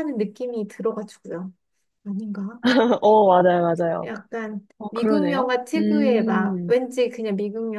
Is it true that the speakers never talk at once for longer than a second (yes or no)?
no